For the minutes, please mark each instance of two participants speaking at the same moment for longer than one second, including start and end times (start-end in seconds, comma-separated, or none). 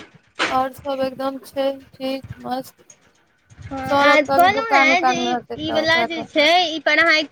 3.9-6.2